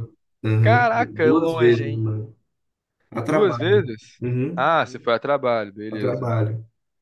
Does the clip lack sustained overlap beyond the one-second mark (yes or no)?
no